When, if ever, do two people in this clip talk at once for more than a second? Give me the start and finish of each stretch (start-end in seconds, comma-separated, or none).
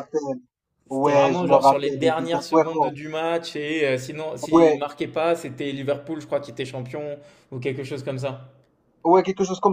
0.9-3.0